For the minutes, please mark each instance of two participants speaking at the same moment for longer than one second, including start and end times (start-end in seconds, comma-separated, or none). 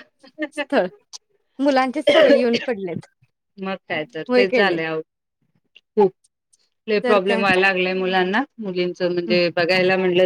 none